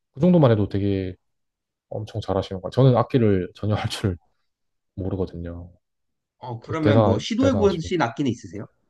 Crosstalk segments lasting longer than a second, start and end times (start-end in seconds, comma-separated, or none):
6.6-8.0